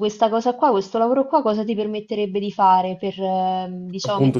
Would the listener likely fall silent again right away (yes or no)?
no